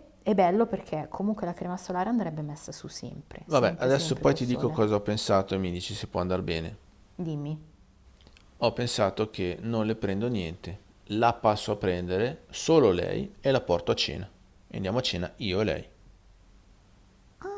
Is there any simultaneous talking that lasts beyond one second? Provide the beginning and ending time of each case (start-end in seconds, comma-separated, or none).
3.5-4.8